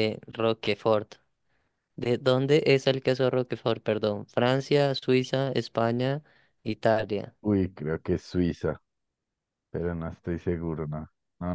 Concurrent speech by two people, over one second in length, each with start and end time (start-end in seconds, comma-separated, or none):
none